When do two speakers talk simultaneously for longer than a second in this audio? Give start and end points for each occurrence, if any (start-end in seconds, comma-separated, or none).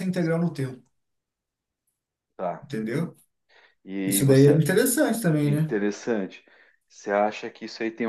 none